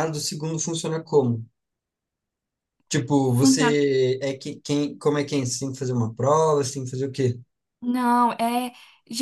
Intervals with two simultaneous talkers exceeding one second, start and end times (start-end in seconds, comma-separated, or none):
none